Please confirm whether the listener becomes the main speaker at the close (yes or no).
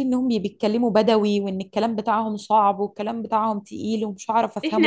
yes